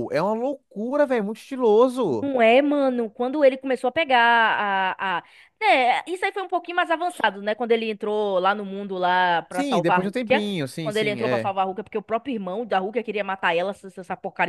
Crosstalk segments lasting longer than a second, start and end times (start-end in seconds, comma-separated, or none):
9.5-11.5